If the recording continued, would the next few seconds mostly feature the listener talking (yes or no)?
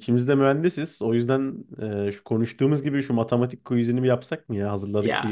yes